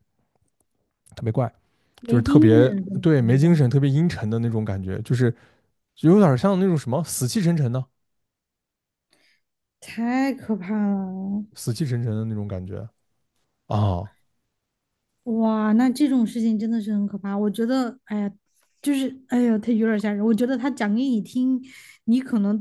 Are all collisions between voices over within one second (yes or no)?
no